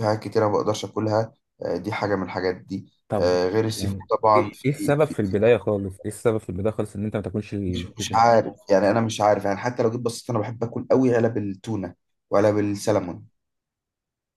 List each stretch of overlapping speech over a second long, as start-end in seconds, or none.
3.1-5.4